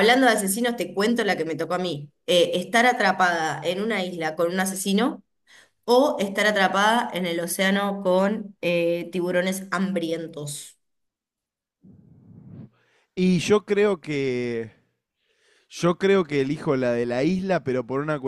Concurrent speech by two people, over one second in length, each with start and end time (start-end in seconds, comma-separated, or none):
none